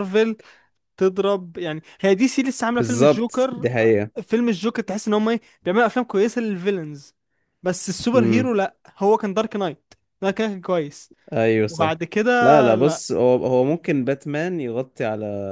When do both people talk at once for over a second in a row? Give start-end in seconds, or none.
2.7-4.1